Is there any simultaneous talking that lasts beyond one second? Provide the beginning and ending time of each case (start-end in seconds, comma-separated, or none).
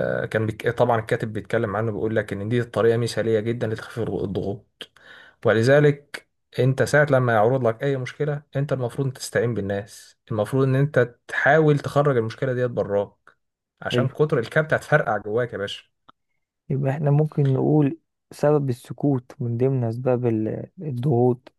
none